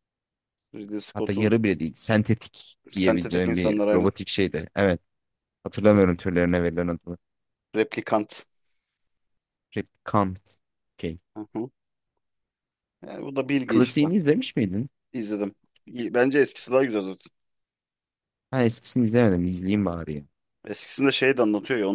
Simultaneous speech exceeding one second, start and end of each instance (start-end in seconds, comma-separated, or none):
2.9-4.1